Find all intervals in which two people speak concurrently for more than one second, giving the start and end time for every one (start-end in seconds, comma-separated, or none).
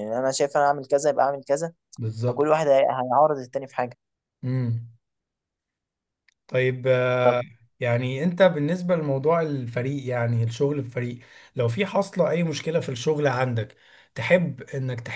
none